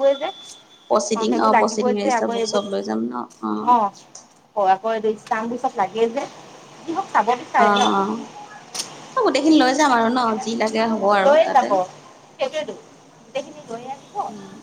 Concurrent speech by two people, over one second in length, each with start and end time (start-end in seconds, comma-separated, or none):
0.9-2.6